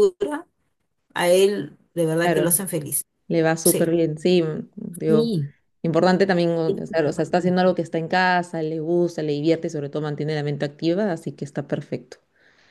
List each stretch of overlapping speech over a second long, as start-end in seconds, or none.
none